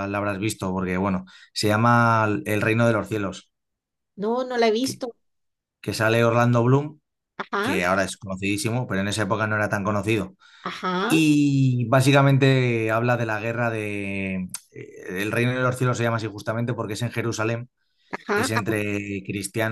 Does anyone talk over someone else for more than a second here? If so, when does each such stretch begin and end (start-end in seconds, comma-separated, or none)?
none